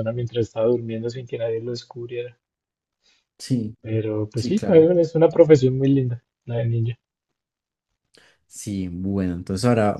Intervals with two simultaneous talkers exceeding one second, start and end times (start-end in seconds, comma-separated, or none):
none